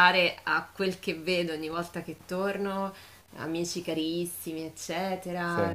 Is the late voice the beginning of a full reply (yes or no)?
no